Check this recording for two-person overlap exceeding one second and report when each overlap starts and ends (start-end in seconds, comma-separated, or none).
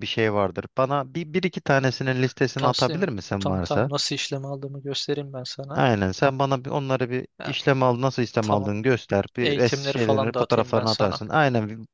2.6-3.9, 9.4-11.2